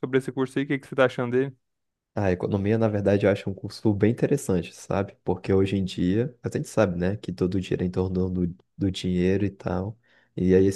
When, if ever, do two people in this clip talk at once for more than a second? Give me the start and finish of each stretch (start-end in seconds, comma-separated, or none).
none